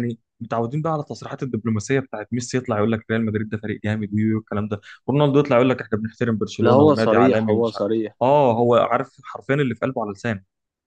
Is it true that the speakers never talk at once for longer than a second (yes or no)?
no